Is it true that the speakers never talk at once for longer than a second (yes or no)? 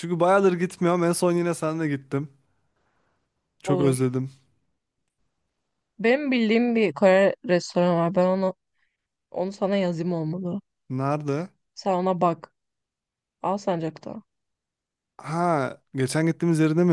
yes